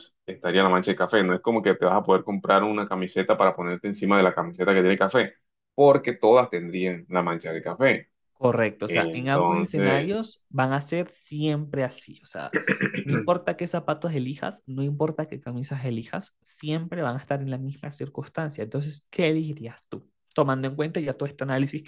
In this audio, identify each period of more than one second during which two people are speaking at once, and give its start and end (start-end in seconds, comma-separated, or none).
8.9-10.3